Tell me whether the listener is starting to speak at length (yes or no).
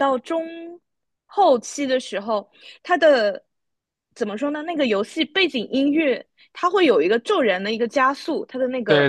yes